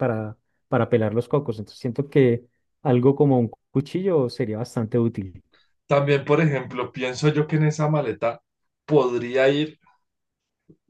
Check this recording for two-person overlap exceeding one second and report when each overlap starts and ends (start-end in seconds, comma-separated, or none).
none